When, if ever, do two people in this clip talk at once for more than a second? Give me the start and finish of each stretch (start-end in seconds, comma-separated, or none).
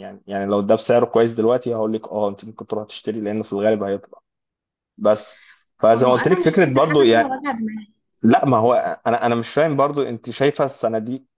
5.9-7.3